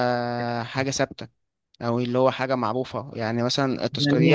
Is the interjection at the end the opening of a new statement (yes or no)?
yes